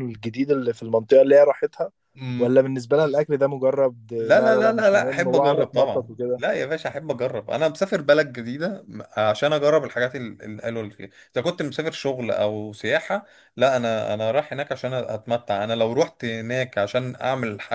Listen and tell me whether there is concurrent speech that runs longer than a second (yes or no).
yes